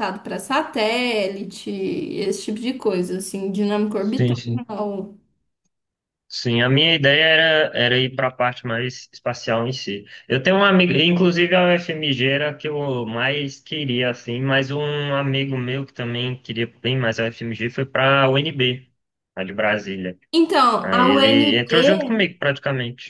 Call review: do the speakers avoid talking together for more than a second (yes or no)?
no